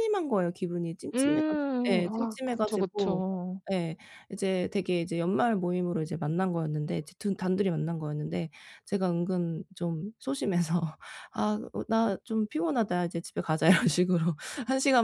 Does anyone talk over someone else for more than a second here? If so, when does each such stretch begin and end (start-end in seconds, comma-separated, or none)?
1.1-3.2